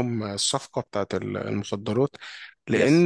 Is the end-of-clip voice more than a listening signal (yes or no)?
no